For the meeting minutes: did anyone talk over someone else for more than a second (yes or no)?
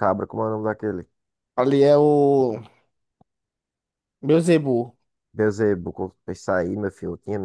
no